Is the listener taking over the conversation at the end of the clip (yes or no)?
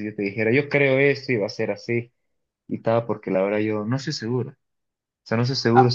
no